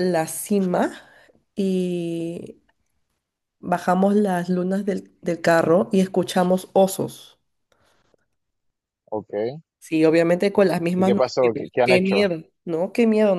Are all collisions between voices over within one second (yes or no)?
no